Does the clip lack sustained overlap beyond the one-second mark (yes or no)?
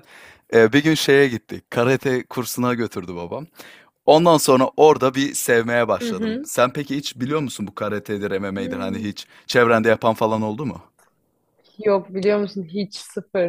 yes